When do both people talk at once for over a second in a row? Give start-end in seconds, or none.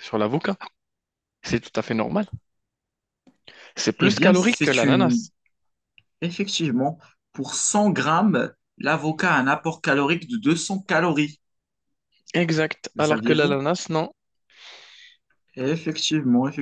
4.0-5.2